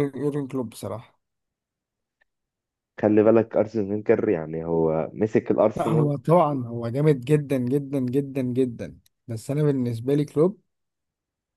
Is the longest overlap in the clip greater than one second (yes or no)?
no